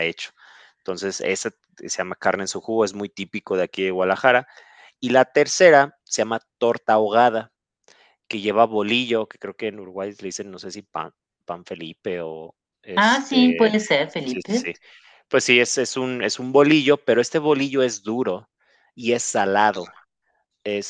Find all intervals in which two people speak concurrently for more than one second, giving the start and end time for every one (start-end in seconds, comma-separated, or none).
13.0-14.7